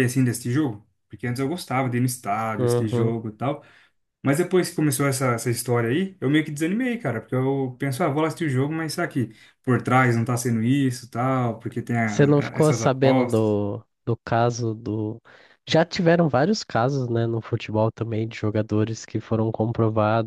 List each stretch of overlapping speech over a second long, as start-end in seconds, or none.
12.1-13.6